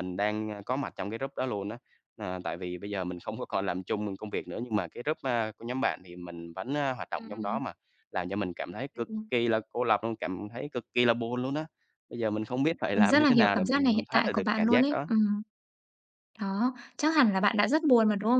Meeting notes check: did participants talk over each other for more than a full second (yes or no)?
yes